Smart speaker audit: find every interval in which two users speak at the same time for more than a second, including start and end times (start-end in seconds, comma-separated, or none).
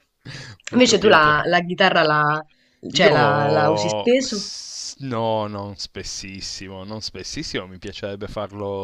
3.0-4.5